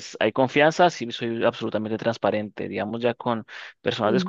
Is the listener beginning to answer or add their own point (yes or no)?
no